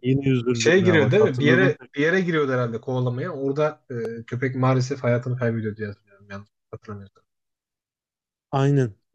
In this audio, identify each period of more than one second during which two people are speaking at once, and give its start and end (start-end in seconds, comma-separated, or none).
0.5-1.8